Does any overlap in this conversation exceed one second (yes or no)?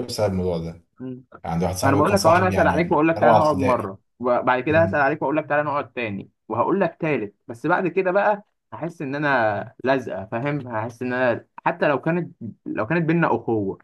yes